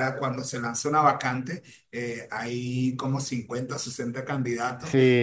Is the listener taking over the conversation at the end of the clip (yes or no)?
no